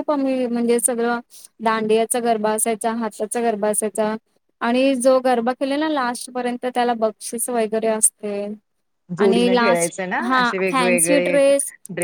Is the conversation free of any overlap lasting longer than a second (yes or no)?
no